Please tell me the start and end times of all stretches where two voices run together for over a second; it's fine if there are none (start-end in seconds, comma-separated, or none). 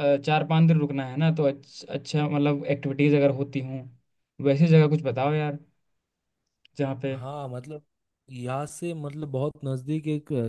none